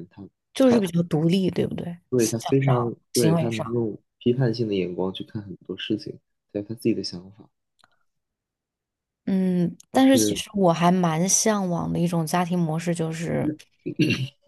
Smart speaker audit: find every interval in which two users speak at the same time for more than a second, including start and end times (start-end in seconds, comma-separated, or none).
2.1-3.7